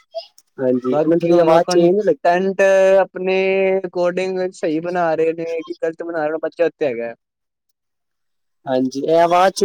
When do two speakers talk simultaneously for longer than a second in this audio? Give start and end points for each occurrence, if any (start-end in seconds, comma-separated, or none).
0.9-2.4